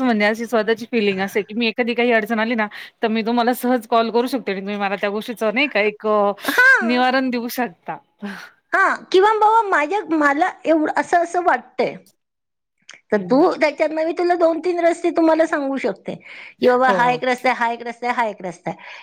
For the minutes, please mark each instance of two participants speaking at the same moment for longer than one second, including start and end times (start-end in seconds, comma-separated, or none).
none